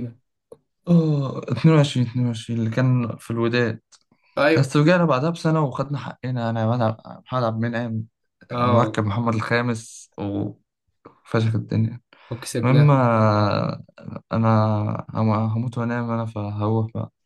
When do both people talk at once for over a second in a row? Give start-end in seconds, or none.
none